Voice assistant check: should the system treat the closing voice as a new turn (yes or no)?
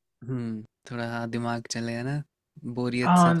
yes